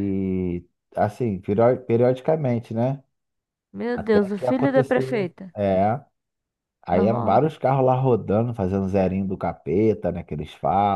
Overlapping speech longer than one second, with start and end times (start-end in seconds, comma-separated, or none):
3.9-5.5